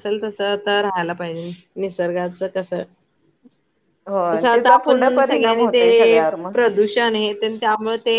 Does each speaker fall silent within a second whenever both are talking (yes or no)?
no